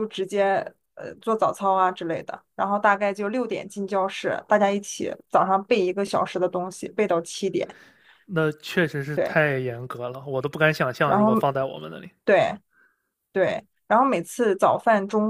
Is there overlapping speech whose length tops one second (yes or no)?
no